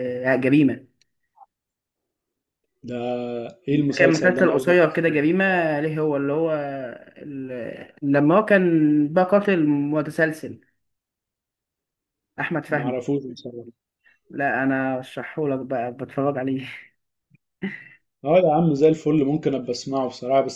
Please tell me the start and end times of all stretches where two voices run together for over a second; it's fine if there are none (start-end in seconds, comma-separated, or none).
4.0-5.2